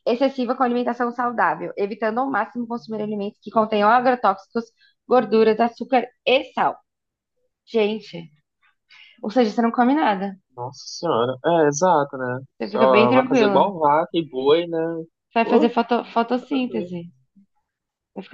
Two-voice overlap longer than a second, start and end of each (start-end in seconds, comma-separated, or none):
12.6-13.8